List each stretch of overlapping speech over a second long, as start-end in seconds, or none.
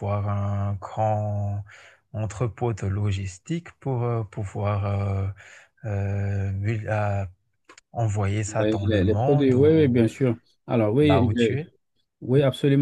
8.5-10.0